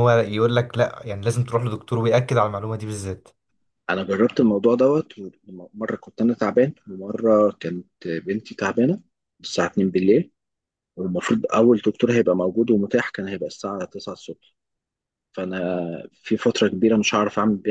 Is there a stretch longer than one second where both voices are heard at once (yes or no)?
no